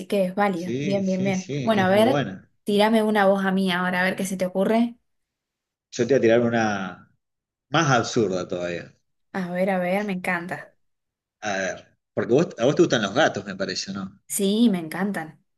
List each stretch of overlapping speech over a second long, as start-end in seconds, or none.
0.5-2.2